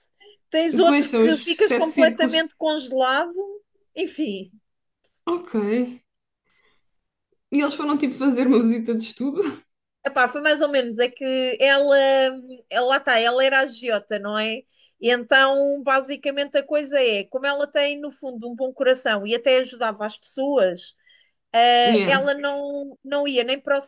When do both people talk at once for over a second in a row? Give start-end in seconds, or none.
0.7-2.4